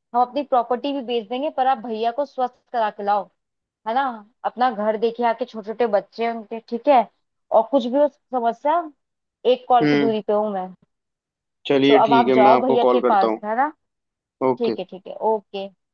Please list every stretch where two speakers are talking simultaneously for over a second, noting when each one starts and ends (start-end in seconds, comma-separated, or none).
11.9-13.4